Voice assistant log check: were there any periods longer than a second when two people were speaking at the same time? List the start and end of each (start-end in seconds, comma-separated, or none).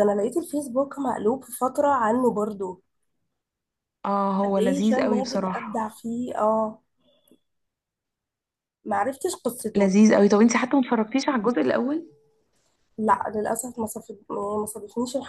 4.4-5.9